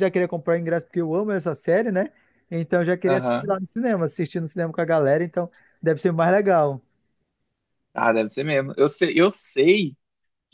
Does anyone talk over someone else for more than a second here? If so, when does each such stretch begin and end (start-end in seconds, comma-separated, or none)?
none